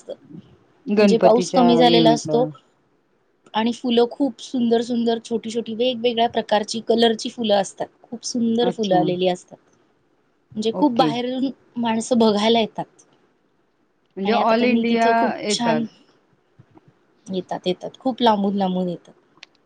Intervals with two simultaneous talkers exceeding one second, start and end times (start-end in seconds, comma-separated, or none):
1.0-2.4